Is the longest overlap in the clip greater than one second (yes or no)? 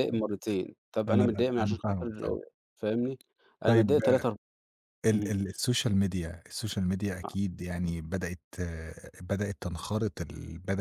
yes